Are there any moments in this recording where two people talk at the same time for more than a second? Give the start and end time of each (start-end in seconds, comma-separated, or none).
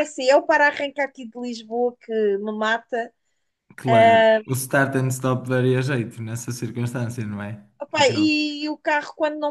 none